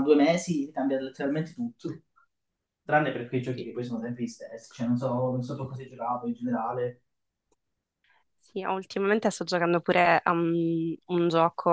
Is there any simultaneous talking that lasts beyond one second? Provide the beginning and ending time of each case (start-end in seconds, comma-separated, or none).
none